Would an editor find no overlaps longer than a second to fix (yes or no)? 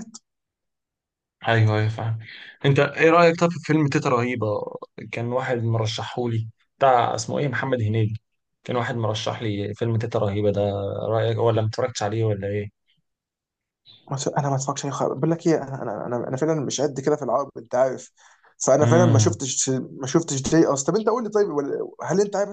yes